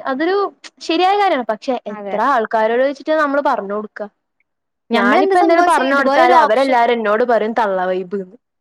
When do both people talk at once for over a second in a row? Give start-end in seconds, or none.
5.0-6.8